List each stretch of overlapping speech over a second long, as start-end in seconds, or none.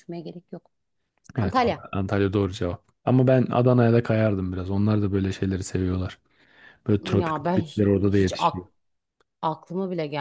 7.0-8.3